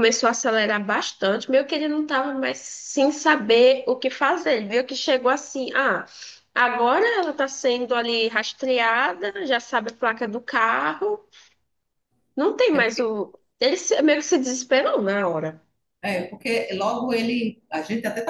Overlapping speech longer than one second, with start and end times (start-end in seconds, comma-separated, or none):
none